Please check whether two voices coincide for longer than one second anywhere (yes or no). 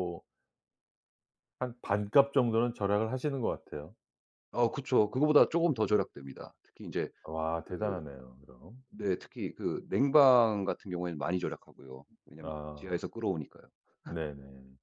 no